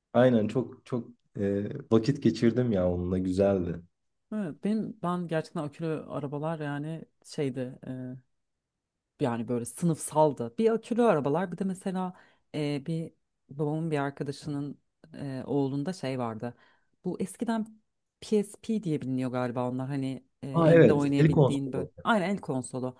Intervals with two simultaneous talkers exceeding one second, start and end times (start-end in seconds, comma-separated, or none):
20.5-21.9